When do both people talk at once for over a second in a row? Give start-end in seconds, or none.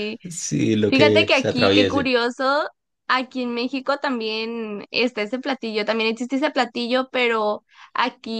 0.9-2.1